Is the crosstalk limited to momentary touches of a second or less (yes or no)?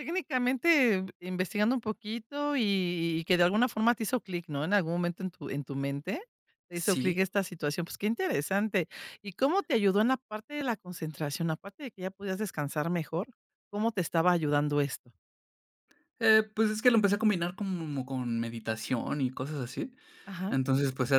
yes